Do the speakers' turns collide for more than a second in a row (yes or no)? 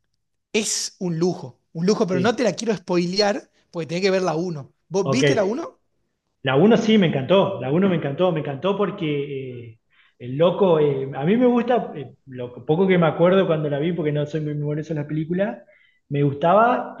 no